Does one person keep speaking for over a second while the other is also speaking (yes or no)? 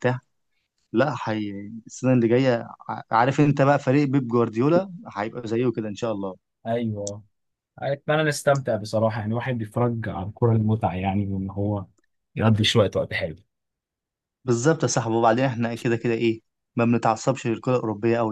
no